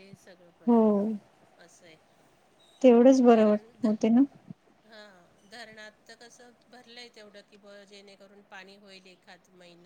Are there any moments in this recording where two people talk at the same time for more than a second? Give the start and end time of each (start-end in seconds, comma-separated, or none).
none